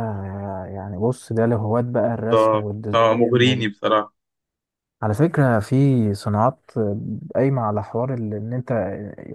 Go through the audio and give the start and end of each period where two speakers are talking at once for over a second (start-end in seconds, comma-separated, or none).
2.3-3.7